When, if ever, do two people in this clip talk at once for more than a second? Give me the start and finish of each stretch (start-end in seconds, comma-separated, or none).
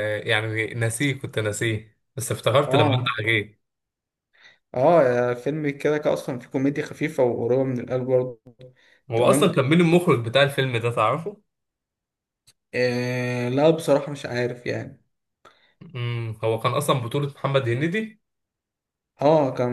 none